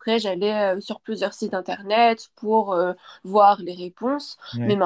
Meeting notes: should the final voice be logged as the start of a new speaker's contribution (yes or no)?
no